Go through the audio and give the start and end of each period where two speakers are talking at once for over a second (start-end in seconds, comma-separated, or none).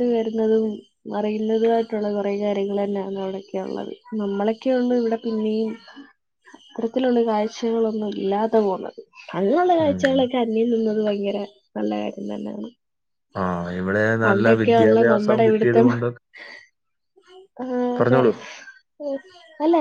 14.2-15.9